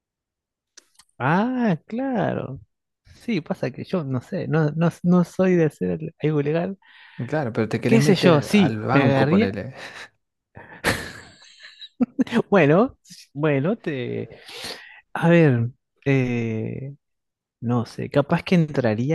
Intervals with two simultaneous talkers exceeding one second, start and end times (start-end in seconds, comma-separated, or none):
7.9-9.6